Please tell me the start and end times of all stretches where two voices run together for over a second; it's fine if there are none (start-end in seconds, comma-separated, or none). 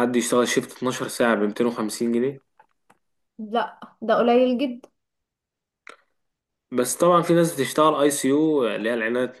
none